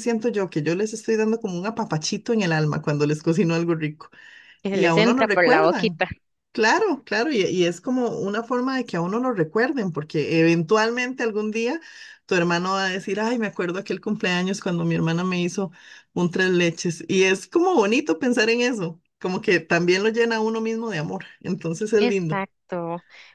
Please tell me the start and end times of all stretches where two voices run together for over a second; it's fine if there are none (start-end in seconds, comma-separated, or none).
4.7-6.0